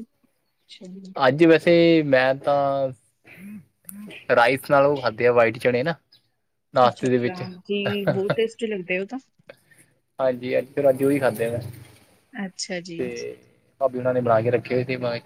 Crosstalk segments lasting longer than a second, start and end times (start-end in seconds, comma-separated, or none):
none